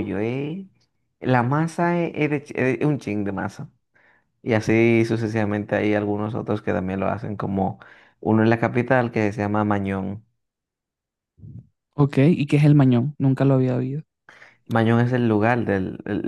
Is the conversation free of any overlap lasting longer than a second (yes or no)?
yes